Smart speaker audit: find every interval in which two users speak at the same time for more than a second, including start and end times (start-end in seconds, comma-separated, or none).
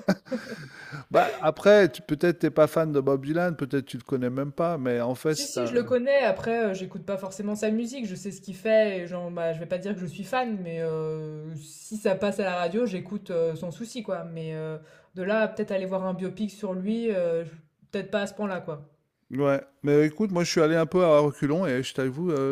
none